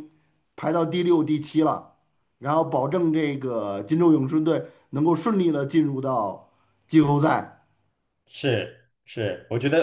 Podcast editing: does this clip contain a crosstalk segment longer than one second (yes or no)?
no